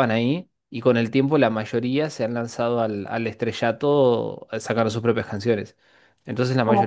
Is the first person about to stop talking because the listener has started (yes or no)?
no